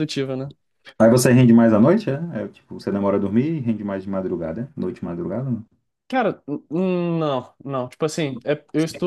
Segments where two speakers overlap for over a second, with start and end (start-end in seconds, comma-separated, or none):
none